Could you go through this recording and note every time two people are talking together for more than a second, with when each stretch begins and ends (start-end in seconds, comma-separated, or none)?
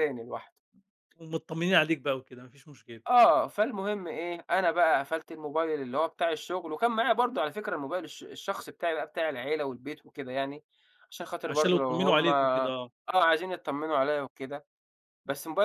11.2-12.9